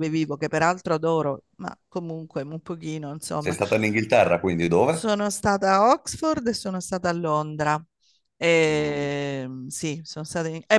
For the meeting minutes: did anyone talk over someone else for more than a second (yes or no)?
no